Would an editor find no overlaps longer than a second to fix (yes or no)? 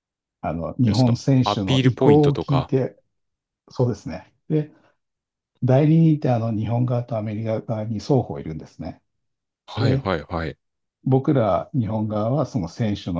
no